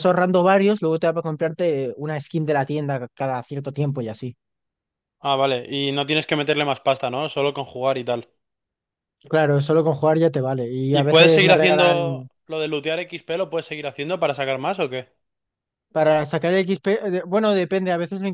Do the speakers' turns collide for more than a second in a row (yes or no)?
yes